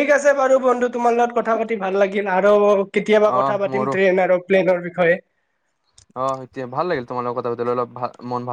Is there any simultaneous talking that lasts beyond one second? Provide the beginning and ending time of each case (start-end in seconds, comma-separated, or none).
none